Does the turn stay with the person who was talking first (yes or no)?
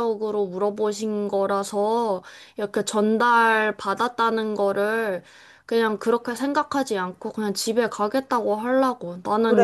yes